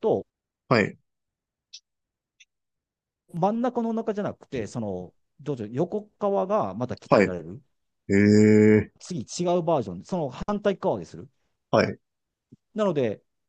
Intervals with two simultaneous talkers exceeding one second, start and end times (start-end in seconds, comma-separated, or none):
none